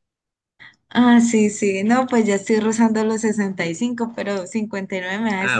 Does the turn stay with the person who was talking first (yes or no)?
no